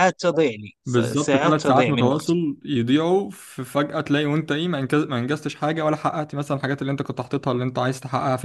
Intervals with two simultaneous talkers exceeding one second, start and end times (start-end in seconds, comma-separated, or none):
0.8-2.4